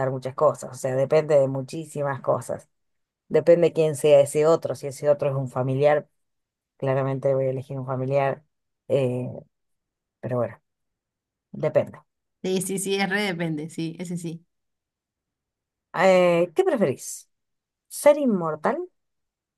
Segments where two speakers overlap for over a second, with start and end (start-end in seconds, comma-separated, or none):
none